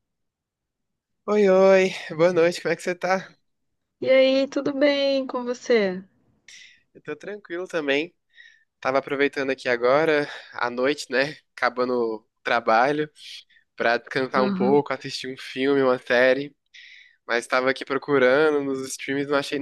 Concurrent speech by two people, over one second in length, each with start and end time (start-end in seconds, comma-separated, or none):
none